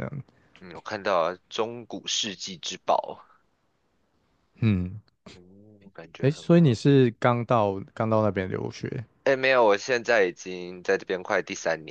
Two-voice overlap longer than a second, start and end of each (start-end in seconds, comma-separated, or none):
none